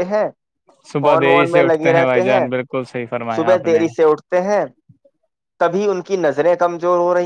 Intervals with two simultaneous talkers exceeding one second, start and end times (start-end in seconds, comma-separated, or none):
1.0-2.4